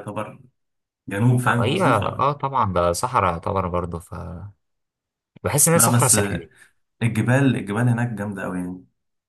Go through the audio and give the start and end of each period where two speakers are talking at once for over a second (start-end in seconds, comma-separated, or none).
none